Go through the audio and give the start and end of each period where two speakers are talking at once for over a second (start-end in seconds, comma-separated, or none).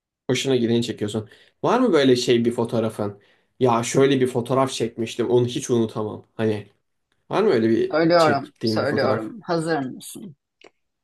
7.9-9.3